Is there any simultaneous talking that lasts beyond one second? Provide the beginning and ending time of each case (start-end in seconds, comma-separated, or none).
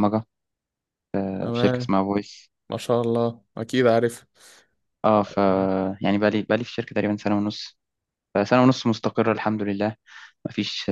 none